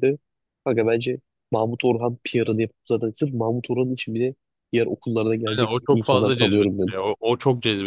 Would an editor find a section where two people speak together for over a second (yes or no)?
yes